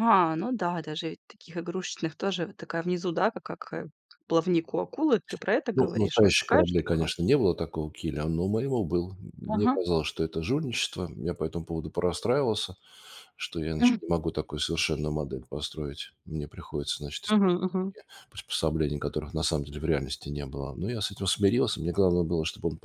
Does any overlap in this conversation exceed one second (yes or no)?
yes